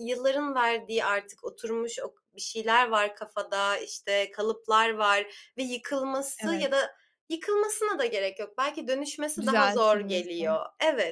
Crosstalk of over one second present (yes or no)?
yes